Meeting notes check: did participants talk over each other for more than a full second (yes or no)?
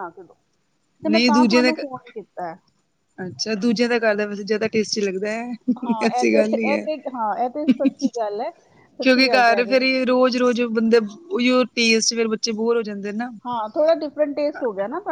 no